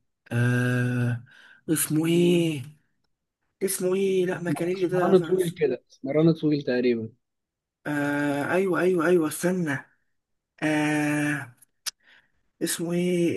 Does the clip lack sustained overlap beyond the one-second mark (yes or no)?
no